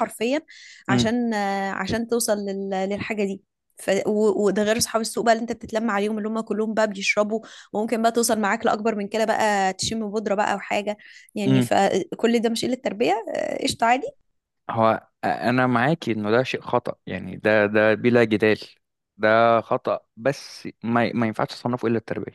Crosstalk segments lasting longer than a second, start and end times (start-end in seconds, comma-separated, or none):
none